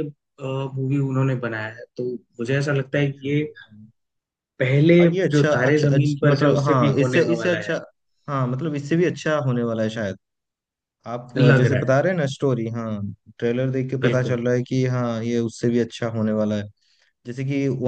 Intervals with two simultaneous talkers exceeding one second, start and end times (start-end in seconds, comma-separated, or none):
5.0-7.7